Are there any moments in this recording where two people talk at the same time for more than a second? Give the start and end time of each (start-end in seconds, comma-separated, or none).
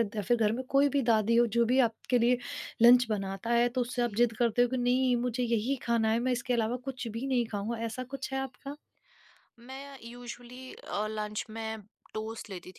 none